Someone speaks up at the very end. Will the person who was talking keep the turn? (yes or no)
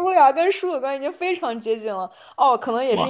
yes